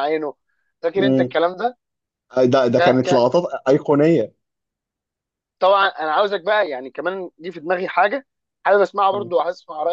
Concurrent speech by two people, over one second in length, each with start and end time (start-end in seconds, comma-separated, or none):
none